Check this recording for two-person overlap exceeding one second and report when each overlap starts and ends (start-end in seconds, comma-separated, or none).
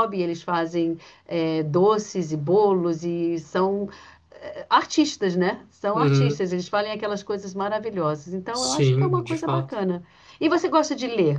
8.5-9.8